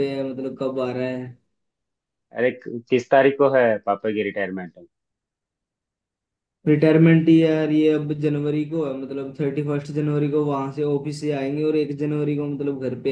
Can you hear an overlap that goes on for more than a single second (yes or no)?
no